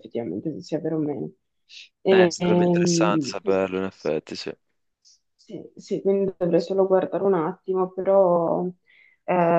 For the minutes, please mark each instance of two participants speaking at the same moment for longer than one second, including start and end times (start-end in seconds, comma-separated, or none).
2.1-3.6